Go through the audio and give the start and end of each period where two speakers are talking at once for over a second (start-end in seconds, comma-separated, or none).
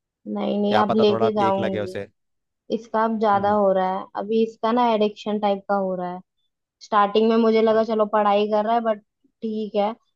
0.7-2.0